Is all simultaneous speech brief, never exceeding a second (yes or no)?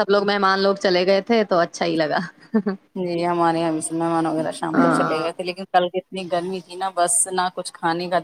yes